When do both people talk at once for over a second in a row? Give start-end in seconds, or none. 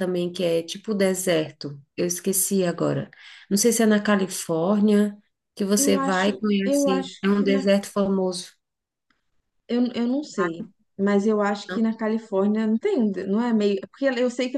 5.8-7.7